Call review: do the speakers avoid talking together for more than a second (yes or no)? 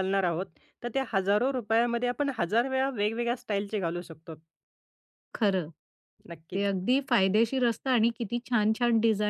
yes